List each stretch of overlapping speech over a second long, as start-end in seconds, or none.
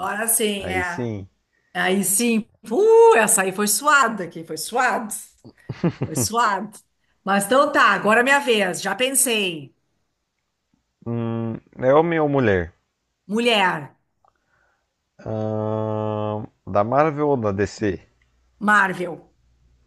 none